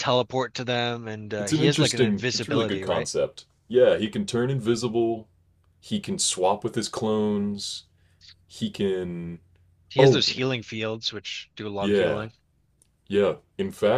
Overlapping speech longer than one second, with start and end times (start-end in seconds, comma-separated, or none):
1.4-3.1